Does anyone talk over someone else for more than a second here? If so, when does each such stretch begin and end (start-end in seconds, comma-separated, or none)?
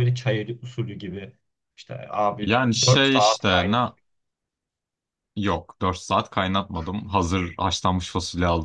2.4-3.8